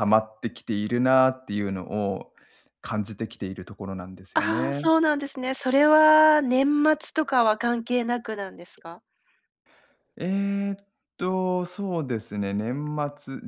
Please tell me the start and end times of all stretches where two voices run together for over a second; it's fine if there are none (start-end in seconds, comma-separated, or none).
none